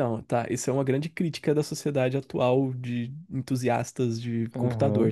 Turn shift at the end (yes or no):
yes